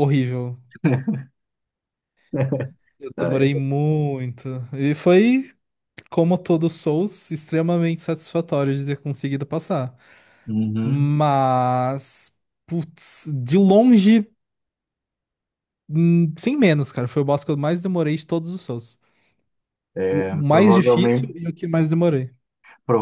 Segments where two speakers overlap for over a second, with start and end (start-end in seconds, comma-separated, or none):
20.0-21.4